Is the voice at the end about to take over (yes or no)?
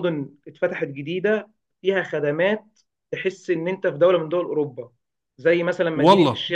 no